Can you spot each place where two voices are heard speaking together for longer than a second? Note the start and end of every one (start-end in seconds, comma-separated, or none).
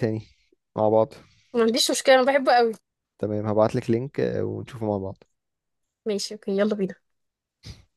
none